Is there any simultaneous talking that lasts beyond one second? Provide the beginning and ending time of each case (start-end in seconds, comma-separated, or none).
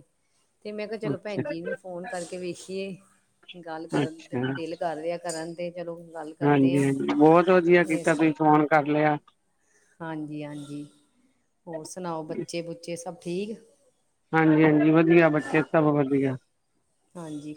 none